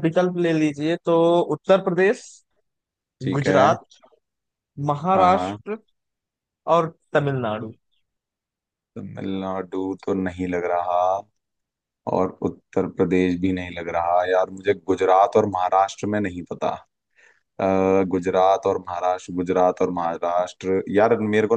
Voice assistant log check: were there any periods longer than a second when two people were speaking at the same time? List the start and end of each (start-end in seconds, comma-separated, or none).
none